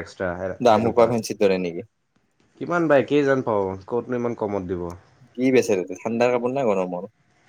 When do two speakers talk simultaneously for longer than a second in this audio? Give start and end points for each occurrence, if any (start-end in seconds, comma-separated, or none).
none